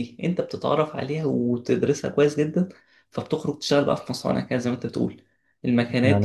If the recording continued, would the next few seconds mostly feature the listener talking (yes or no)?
no